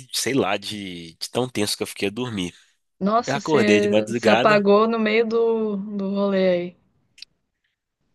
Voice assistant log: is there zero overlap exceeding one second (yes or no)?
no